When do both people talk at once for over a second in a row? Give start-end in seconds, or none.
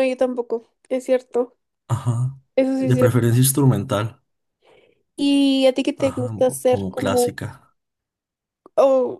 6.0-7.3